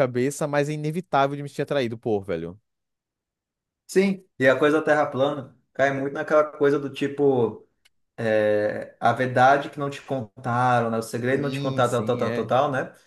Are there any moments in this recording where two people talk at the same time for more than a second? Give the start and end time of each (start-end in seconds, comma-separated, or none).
11.2-12.5